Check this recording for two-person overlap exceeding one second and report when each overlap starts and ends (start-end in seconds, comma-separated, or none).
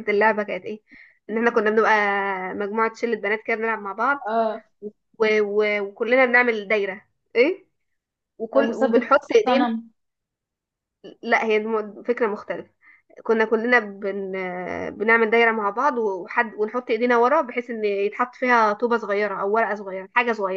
8.5-9.7